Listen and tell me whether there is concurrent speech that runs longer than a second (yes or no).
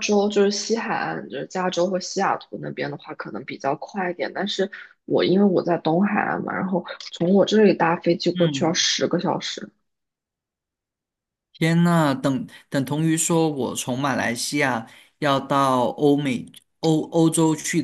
no